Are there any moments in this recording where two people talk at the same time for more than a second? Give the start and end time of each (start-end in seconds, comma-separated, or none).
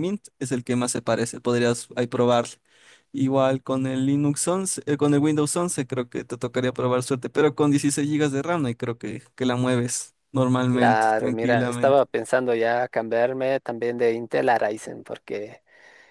10.7-12.0